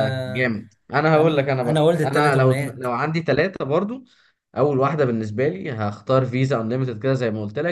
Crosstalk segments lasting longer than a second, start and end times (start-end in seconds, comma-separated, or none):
1.1-2.9